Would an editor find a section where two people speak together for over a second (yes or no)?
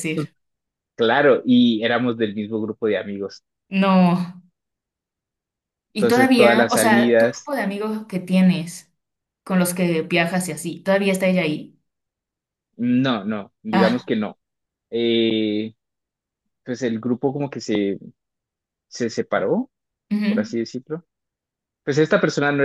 yes